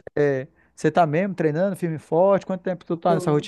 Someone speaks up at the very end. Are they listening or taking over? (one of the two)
taking over